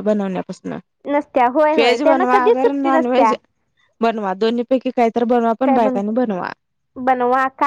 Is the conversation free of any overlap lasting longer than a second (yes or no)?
no